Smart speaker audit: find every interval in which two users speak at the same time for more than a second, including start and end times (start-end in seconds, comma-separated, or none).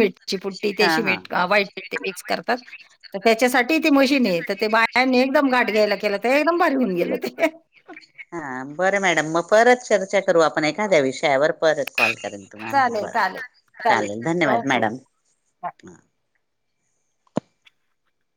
none